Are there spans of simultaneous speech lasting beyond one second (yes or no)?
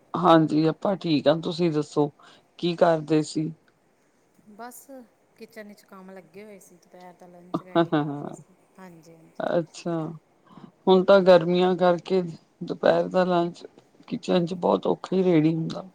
no